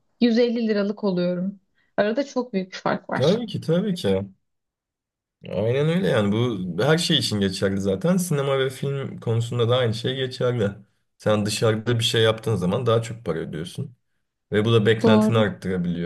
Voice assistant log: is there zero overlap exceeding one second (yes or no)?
yes